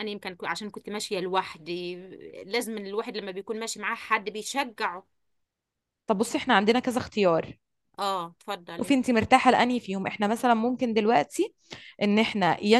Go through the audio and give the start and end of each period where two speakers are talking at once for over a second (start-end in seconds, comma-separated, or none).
none